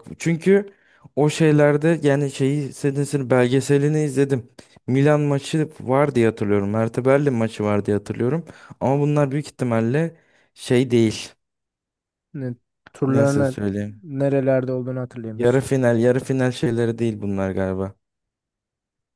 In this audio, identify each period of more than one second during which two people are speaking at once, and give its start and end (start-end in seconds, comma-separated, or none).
none